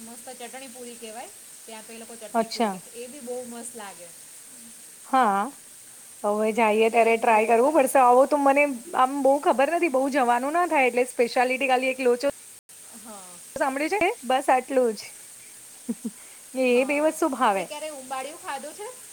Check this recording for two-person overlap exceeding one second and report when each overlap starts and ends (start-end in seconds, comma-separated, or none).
6.6-8.1